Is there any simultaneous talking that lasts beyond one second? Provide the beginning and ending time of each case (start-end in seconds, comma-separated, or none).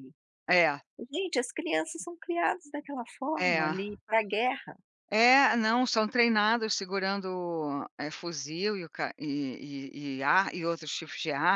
none